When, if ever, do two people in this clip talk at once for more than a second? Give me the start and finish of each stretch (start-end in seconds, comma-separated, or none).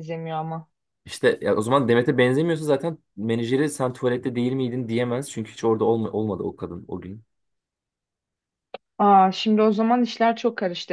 none